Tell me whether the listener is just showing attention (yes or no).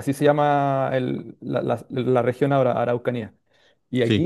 yes